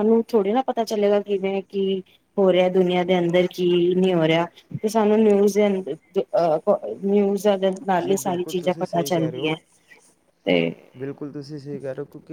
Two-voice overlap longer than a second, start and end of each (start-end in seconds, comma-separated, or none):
8.0-9.5